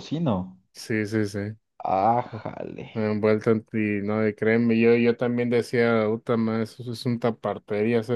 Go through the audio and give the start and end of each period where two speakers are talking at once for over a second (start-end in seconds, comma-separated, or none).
none